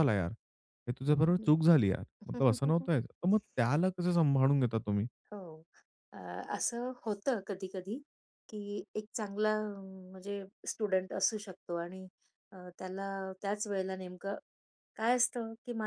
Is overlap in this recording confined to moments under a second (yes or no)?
yes